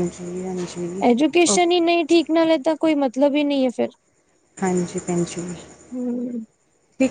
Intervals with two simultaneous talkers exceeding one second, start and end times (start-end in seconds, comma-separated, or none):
none